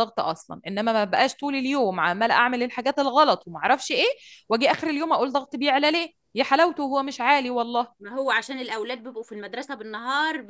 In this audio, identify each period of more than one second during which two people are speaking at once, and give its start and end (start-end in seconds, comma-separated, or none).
none